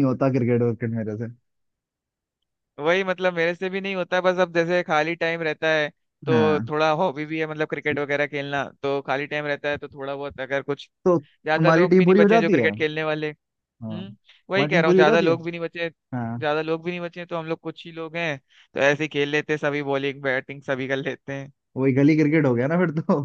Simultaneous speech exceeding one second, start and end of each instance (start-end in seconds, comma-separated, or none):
11.4-12.7, 13.8-15.3